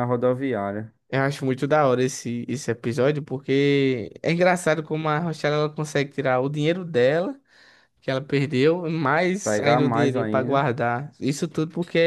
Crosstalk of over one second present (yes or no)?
yes